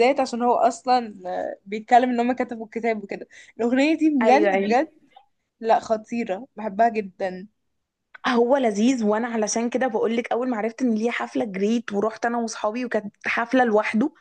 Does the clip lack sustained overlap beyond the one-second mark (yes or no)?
yes